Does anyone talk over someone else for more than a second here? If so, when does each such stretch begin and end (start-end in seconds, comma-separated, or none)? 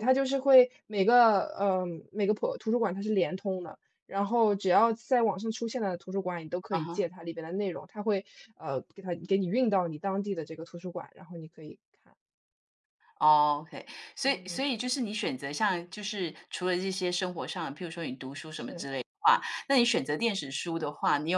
none